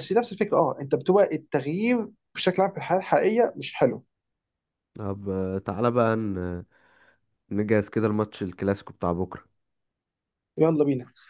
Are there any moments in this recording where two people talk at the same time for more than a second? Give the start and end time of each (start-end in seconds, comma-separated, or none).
none